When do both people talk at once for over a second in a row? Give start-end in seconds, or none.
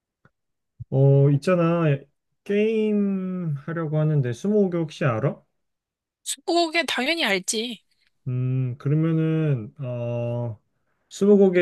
none